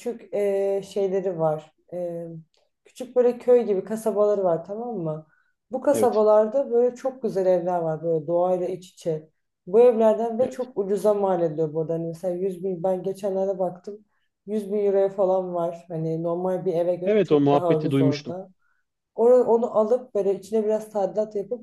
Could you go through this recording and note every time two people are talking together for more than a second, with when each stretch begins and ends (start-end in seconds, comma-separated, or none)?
17.1-18.4